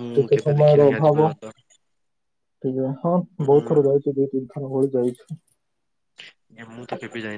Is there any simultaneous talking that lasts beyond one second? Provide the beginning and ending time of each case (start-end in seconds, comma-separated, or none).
none